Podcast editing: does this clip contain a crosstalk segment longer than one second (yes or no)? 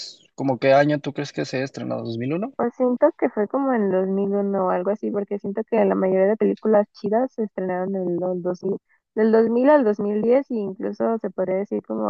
no